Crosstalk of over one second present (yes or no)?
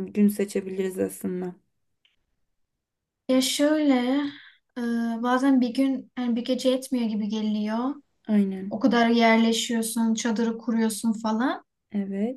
no